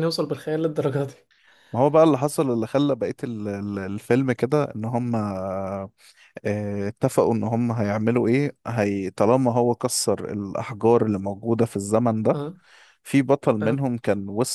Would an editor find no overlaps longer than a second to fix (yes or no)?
yes